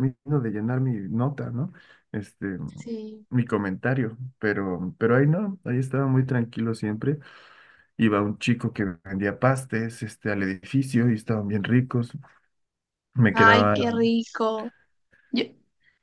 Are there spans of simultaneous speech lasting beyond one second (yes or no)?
no